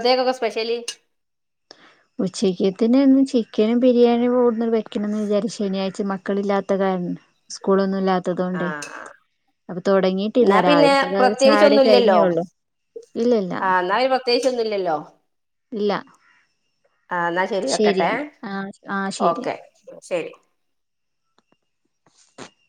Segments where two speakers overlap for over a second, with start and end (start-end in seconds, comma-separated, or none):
10.4-12.2